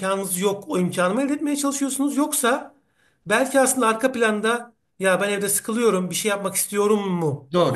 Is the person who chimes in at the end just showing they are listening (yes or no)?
no